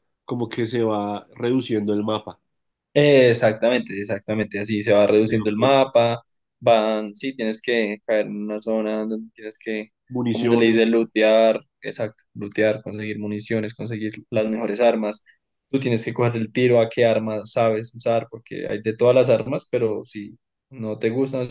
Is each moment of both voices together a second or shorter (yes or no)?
yes